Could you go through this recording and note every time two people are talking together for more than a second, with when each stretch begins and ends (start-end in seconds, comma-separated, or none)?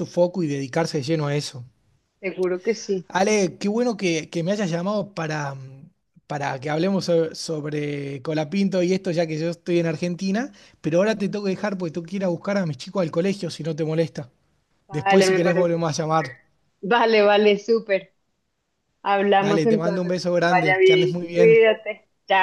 14.9-16.3, 19.4-21.6